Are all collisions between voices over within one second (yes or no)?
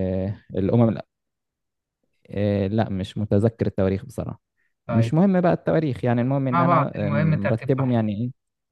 no